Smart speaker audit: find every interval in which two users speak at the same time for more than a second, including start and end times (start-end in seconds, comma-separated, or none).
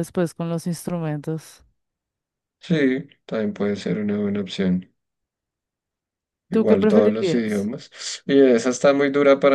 6.5-7.7